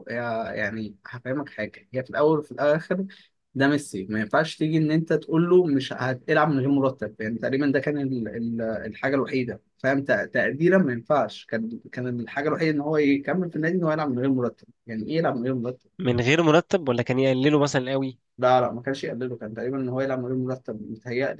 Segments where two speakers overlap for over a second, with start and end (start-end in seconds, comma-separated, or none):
none